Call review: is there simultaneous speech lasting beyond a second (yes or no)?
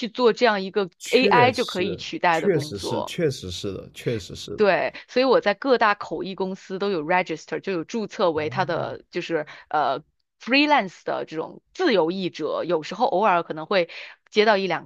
yes